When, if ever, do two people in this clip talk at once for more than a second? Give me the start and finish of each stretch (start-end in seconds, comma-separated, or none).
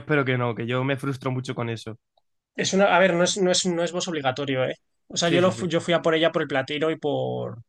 none